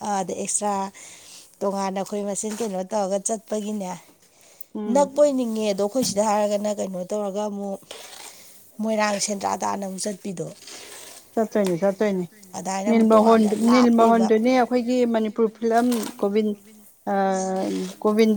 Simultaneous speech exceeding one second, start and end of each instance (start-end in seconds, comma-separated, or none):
12.9-14.3